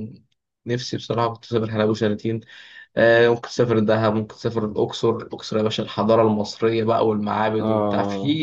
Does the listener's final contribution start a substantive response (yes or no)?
no